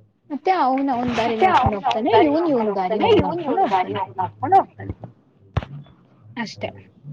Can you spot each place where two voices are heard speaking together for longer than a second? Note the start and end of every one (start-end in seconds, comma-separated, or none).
1.2-4.0